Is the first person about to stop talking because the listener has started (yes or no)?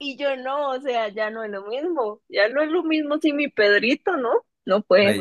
yes